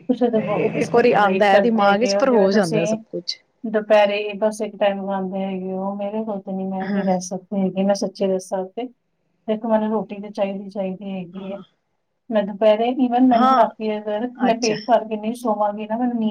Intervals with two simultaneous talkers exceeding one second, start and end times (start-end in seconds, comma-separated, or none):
0.8-3.0